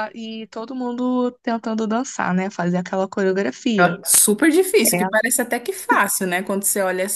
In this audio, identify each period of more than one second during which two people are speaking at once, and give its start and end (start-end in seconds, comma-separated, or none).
none